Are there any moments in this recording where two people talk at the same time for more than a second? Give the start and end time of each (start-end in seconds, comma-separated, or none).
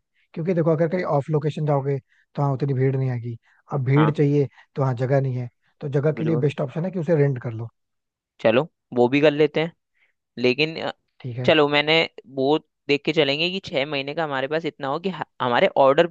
none